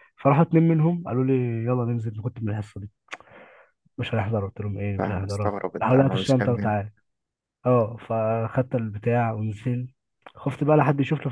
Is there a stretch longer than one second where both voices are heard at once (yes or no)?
yes